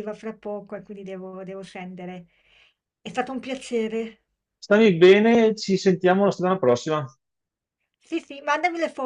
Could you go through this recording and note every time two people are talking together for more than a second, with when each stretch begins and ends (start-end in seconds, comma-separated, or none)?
none